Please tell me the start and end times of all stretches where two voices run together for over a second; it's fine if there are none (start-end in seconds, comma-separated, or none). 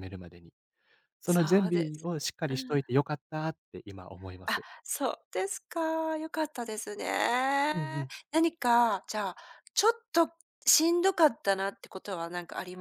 1.2-2.8